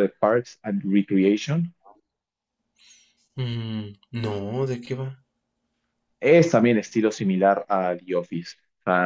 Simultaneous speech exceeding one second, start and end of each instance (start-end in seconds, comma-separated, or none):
none